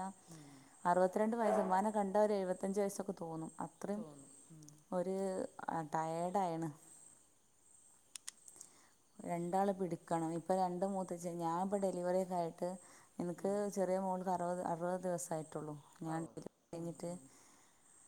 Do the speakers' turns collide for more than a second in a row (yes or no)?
no